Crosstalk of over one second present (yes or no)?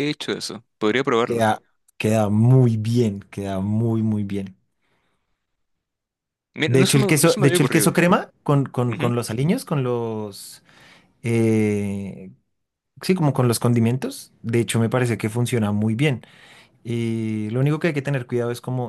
yes